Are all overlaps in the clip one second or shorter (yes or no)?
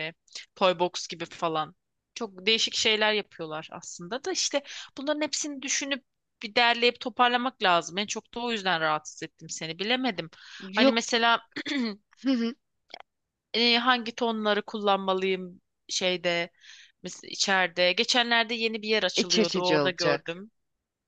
no